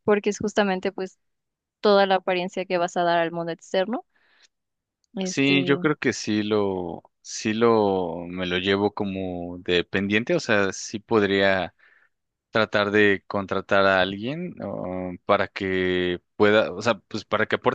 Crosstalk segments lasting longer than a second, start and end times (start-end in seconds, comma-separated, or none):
none